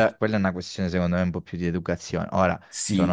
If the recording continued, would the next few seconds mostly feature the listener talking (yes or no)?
yes